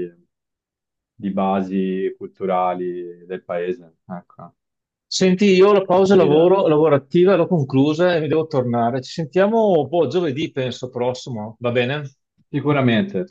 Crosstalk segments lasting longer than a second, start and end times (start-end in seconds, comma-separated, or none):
none